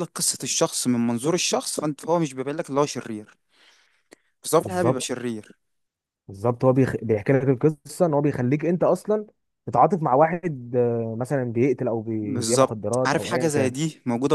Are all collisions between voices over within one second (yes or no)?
no